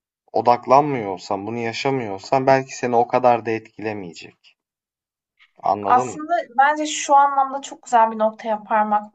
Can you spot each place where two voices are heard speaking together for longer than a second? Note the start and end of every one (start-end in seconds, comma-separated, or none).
none